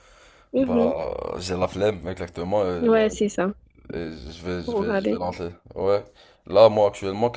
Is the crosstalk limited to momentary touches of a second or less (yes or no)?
yes